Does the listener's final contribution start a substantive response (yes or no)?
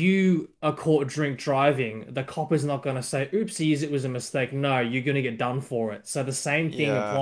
no